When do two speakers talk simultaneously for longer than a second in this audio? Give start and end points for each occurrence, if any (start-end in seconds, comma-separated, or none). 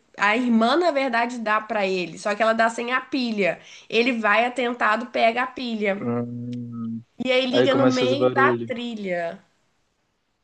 7.5-8.7